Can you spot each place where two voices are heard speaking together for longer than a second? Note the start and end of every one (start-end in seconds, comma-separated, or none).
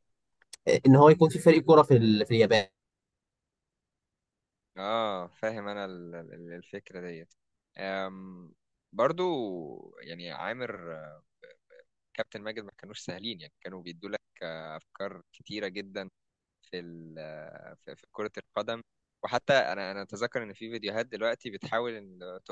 none